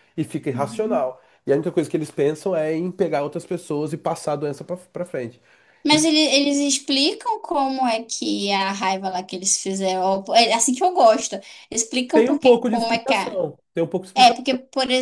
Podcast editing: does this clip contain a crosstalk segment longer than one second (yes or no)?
yes